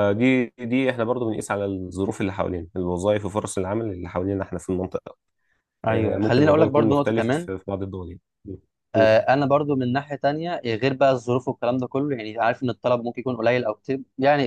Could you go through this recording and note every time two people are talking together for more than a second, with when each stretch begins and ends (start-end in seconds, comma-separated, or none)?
5.9-7.5